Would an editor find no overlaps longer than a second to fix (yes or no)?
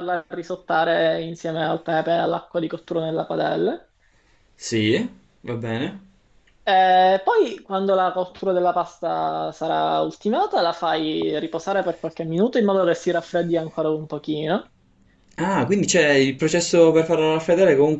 yes